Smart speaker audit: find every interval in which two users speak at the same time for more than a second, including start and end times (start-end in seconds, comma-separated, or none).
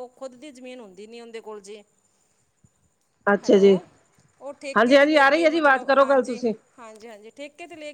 4.8-6.4